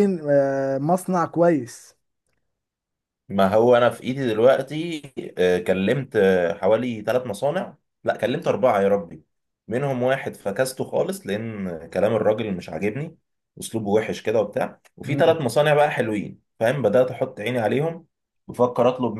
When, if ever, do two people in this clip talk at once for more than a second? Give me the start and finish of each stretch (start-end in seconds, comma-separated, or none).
none